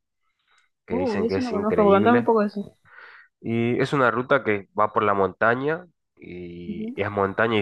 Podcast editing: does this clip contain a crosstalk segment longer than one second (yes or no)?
yes